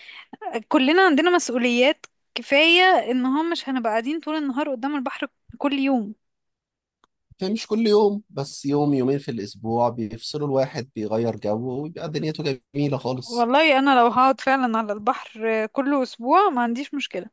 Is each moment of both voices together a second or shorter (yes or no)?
yes